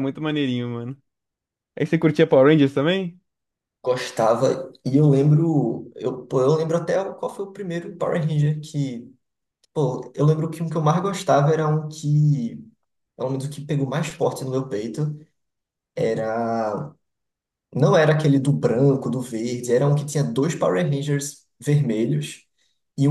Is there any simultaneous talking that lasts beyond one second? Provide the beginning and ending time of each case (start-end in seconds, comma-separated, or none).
none